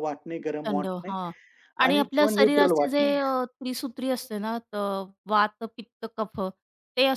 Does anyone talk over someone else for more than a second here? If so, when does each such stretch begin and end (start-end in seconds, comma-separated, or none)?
1.9-3.1